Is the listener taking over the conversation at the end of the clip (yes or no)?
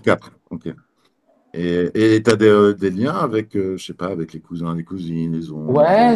yes